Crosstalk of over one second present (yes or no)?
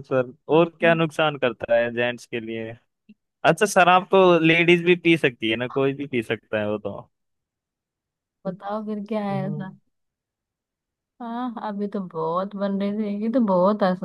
no